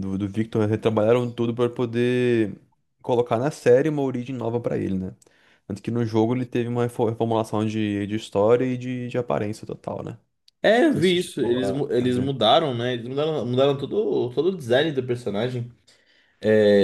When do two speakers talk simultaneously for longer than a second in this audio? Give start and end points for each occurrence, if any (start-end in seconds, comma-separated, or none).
10.9-12.3